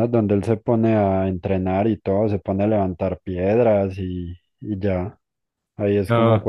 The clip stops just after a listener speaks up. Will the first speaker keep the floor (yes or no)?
yes